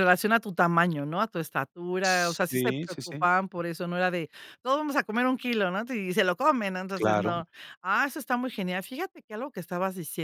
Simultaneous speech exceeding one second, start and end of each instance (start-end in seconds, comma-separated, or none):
2.0-3.3